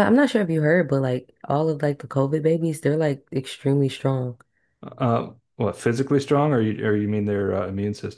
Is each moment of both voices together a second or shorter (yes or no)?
yes